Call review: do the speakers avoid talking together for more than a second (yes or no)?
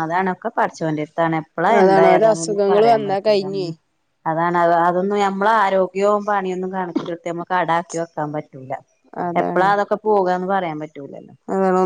no